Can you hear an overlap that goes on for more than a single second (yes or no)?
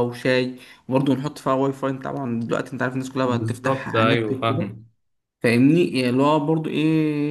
yes